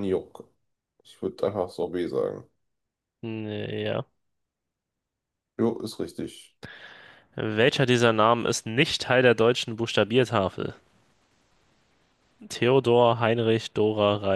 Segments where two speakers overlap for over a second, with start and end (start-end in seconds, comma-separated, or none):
none